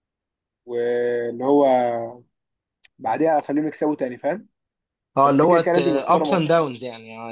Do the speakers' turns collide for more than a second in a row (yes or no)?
yes